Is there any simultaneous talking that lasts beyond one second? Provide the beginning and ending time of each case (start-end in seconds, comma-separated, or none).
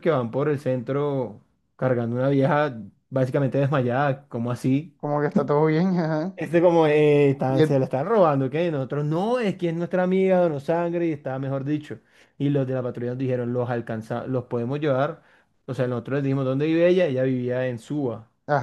none